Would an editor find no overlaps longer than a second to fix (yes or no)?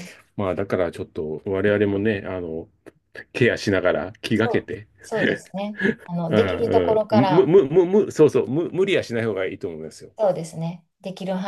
no